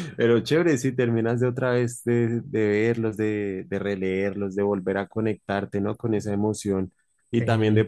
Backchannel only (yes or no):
yes